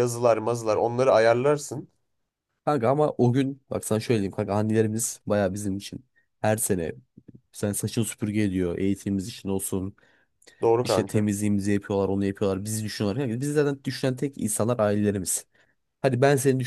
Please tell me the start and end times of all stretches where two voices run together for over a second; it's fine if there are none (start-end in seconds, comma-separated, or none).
none